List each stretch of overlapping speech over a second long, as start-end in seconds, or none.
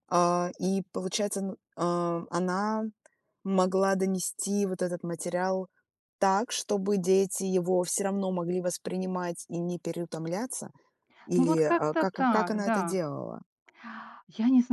11.4-13.0